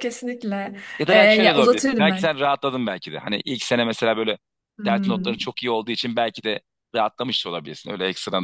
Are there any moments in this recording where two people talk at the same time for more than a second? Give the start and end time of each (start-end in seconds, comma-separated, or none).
1.0-2.3